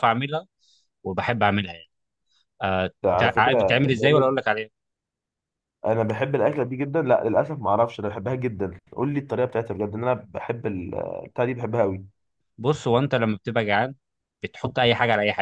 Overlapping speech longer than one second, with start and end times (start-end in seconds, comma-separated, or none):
3.0-4.3